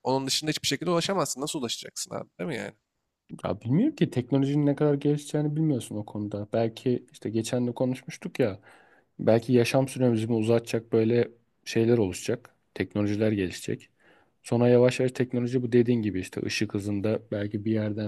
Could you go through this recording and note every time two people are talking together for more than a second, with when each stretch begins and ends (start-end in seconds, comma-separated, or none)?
none